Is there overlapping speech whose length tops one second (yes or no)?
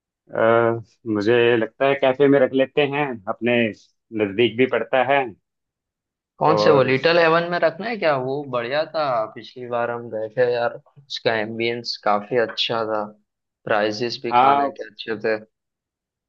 no